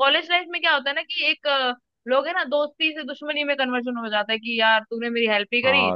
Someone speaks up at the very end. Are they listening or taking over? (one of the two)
taking over